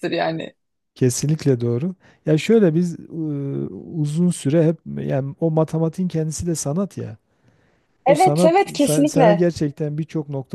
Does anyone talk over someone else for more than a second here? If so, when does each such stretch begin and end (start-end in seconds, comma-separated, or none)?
8.1-9.5